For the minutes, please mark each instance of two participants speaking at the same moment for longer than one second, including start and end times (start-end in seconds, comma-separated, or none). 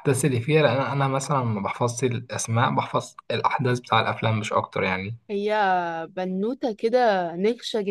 none